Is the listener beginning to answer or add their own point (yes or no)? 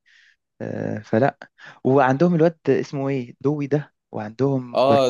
yes